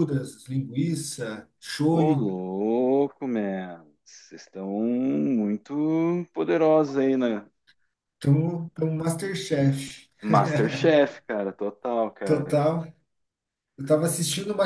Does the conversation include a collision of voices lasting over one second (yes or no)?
no